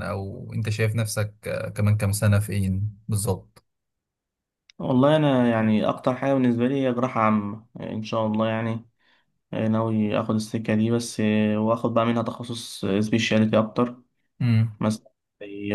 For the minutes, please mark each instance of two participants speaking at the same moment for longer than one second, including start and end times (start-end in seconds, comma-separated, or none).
none